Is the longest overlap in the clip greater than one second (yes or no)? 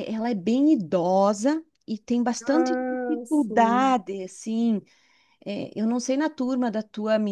yes